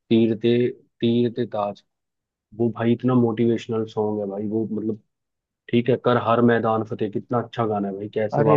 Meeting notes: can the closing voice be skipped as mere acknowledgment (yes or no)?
no